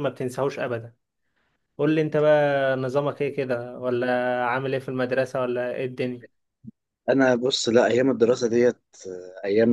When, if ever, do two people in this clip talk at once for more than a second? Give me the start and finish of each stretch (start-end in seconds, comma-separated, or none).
none